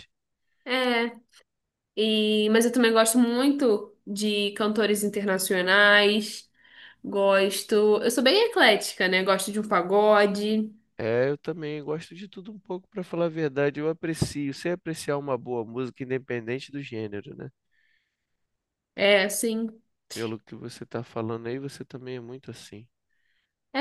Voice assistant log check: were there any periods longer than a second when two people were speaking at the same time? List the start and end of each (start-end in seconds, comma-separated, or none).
none